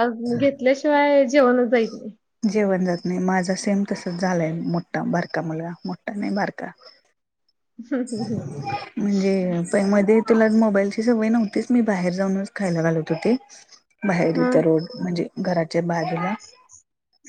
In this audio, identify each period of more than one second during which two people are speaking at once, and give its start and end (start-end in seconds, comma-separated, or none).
none